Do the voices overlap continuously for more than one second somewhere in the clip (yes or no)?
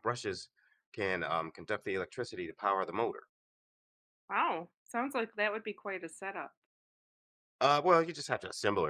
no